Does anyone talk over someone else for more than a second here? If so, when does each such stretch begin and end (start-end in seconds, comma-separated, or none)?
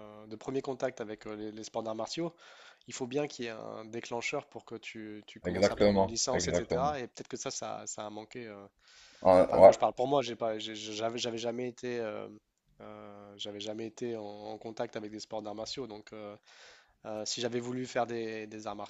5.5-7.0